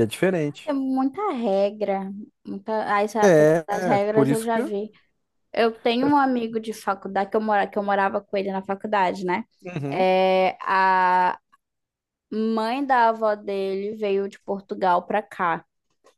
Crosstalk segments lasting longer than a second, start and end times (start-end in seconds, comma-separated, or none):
3.2-4.6